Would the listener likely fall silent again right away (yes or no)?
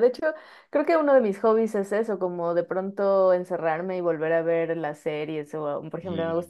yes